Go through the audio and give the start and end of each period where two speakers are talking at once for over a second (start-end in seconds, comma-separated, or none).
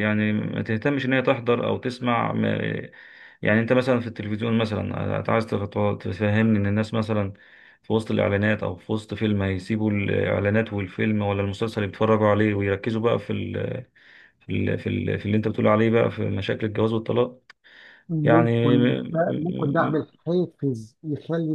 18.2-20.1